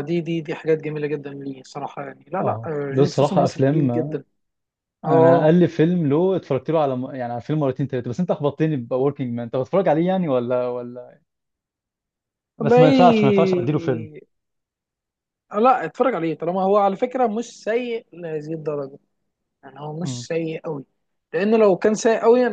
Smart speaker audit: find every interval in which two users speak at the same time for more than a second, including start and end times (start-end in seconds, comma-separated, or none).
2.4-3.9